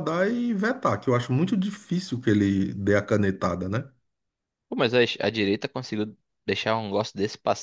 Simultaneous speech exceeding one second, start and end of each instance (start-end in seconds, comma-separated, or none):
none